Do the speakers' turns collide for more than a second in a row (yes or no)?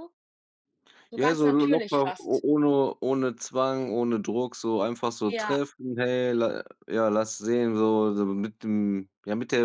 yes